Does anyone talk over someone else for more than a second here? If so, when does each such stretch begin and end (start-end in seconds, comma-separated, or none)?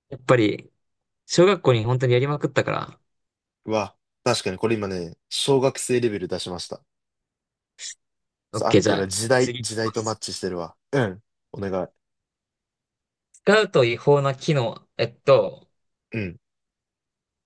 8.5-10.2